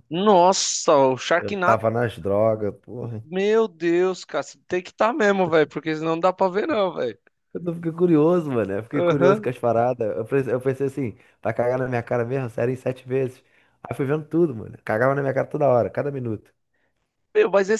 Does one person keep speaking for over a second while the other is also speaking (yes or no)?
no